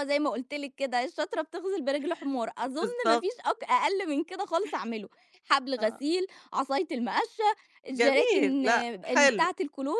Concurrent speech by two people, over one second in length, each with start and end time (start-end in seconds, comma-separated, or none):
8.0-9.5